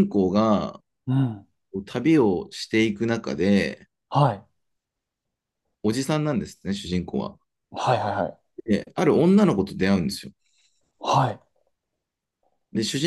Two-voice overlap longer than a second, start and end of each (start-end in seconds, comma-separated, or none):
none